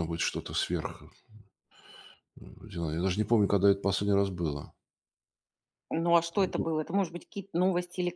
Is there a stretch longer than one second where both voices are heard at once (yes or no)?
no